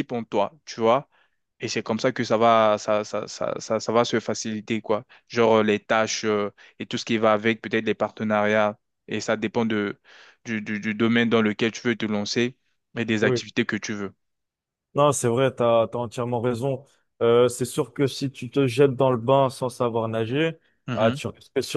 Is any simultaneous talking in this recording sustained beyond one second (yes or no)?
no